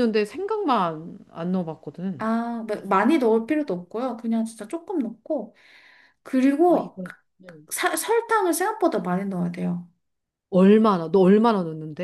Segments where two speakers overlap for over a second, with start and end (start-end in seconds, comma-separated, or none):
none